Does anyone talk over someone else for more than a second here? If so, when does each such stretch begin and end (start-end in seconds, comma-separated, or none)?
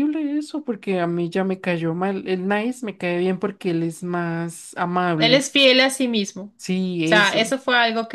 none